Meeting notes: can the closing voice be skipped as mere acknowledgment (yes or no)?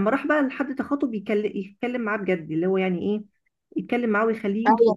no